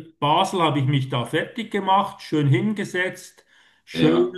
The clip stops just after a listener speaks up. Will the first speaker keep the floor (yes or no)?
yes